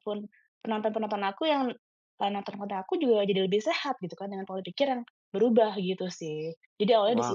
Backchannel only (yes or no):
no